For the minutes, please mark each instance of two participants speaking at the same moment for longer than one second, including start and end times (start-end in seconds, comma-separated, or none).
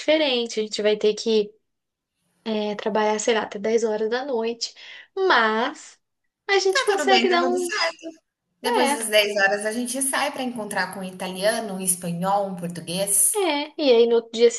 6.7-8.0